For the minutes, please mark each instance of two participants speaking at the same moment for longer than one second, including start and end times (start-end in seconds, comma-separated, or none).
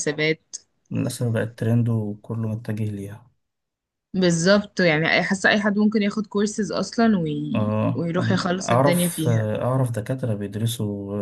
7.5-9.5